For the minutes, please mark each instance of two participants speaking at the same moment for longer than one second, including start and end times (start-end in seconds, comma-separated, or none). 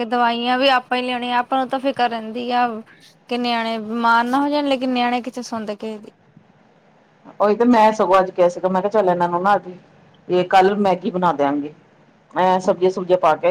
none